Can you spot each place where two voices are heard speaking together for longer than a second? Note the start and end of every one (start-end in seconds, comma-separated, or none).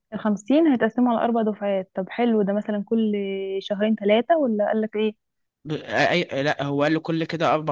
none